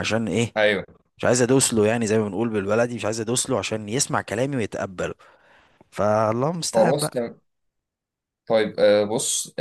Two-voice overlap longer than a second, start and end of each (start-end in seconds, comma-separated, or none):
none